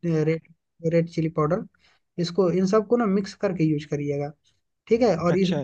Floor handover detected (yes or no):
no